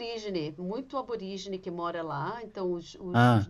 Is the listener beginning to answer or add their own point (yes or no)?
no